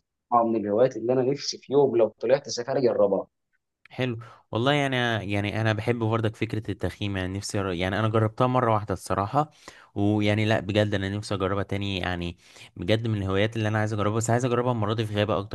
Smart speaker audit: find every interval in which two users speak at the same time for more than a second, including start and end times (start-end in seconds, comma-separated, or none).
none